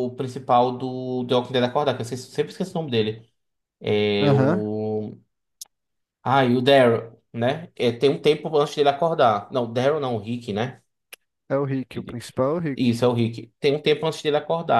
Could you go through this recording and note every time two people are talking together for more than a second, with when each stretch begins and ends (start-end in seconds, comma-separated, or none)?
none